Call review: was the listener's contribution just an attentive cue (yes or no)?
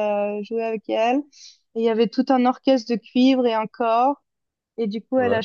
yes